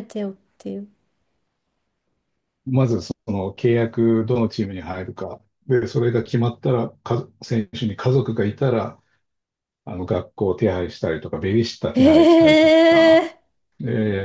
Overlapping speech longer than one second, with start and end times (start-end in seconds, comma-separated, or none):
11.9-13.3